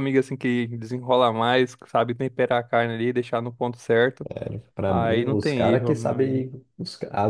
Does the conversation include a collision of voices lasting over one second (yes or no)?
yes